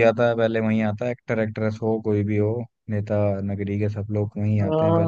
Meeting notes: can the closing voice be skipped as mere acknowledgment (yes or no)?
no